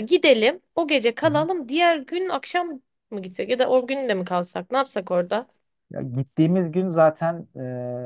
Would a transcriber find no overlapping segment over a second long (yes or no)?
yes